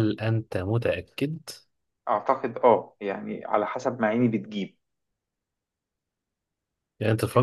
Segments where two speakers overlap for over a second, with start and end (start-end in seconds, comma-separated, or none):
none